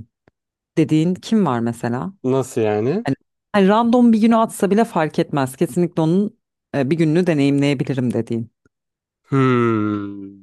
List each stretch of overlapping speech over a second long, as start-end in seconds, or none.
none